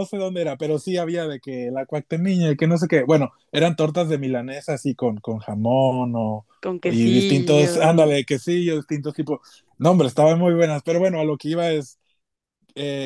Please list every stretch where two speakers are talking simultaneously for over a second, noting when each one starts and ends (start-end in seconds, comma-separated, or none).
6.9-8.2